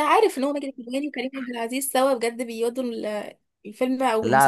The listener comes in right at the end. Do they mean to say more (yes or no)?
yes